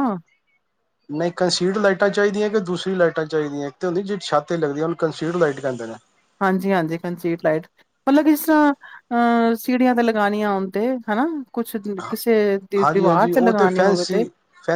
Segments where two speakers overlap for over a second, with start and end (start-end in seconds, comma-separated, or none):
12.8-14.2